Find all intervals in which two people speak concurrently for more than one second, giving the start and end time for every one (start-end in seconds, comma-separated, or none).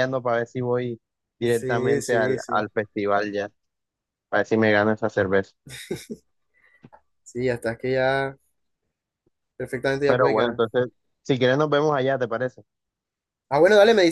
1.4-2.6